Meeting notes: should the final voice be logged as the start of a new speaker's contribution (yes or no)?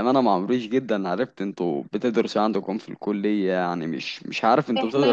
yes